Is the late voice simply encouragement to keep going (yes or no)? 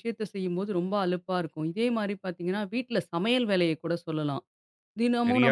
no